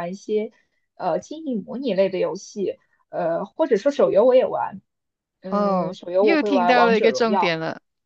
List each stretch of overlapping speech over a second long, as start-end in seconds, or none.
5.5-7.6